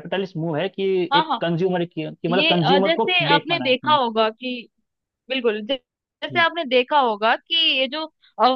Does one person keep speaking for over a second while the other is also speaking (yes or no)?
yes